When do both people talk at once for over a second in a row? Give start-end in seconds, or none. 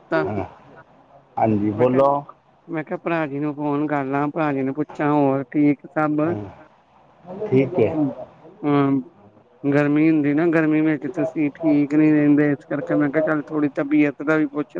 none